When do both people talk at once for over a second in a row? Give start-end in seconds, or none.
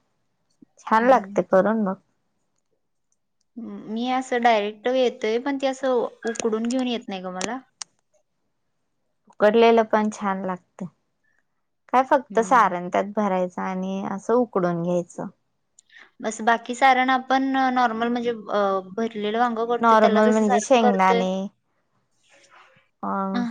19.8-21.2